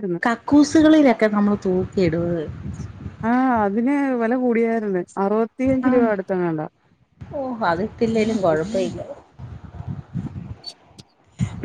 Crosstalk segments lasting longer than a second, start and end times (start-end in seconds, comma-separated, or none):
none